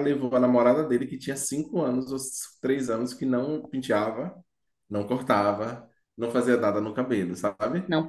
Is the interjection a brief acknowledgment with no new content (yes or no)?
yes